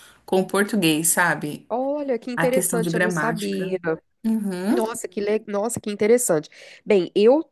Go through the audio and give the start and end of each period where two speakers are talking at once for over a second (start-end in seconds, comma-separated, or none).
2.3-3.8